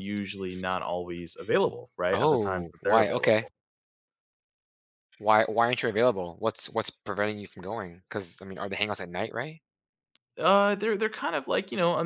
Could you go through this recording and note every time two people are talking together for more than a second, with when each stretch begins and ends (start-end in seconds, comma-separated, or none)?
2.1-3.5